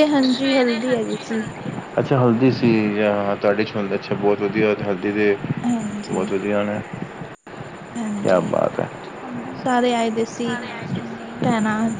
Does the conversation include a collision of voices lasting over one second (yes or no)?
no